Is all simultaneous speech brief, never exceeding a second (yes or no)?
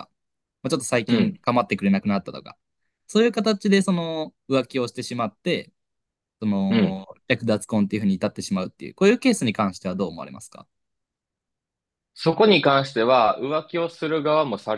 yes